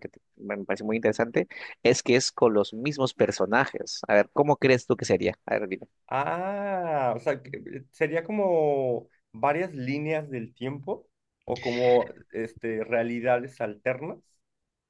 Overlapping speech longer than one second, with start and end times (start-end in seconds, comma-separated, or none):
none